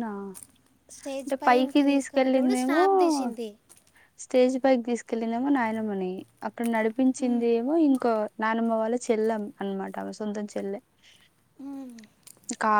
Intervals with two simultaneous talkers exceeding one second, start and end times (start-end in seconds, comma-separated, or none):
1.2-2.8